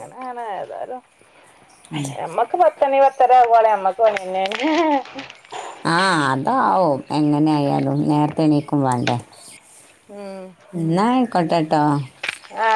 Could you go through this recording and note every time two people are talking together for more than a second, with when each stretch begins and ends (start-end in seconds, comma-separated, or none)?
none